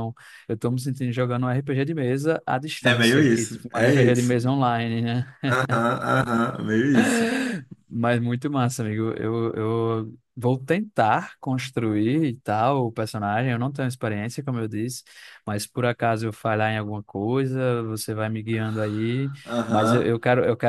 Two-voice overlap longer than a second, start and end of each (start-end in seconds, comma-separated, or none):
2.8-4.3